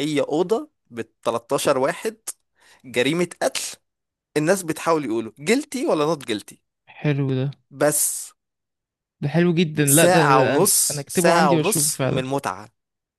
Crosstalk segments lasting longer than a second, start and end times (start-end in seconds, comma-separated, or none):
9.8-12.2